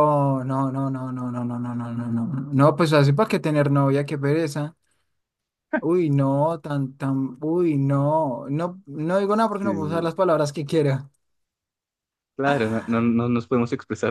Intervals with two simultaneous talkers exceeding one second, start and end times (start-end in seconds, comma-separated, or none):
none